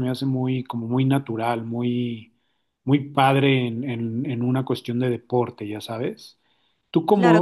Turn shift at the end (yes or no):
yes